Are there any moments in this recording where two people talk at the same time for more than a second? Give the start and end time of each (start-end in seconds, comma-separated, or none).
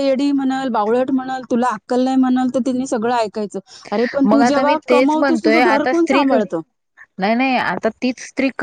4.2-6.2